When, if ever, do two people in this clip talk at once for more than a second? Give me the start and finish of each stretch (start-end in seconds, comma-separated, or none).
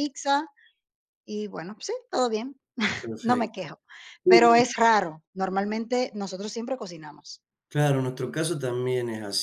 none